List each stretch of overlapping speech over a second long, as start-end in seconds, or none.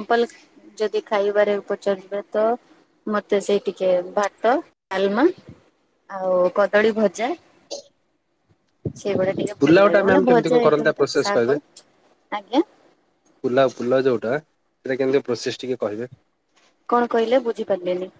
9.6-11.5